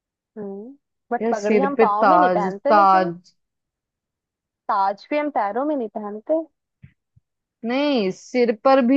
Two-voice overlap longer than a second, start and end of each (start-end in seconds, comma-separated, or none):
1.2-3.1